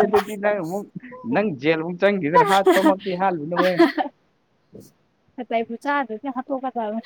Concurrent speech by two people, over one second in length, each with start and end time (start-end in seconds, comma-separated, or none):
none